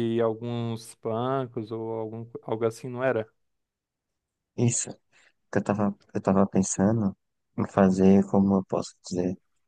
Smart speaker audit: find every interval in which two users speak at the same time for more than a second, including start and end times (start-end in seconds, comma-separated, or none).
none